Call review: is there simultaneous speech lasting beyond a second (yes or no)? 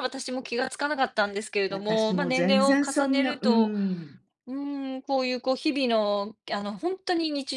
yes